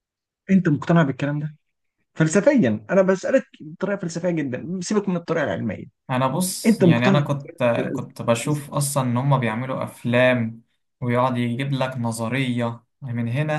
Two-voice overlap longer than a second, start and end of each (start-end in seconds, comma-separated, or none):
6.7-8.0